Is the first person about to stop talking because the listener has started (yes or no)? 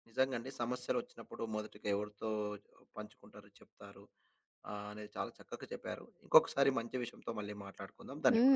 yes